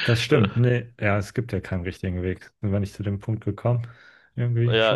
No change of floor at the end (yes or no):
no